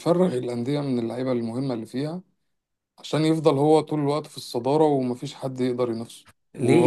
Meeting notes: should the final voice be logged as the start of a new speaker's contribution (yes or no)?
yes